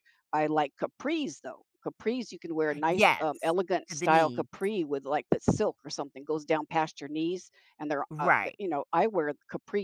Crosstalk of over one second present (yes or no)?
yes